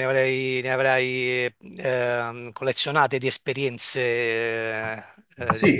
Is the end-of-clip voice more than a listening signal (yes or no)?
yes